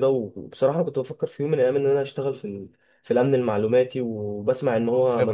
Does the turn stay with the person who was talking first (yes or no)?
yes